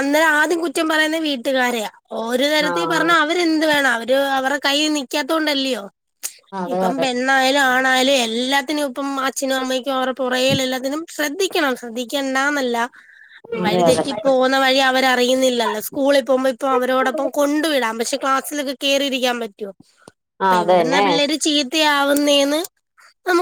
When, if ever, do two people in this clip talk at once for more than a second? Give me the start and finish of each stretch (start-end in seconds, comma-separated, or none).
none